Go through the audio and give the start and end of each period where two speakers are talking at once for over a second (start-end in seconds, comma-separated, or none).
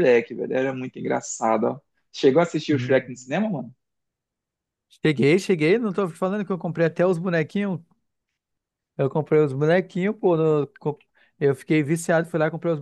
none